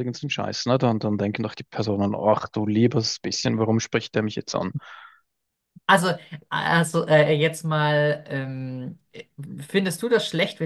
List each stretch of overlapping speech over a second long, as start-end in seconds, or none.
none